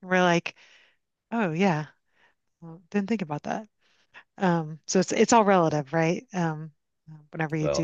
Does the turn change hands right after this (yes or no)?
yes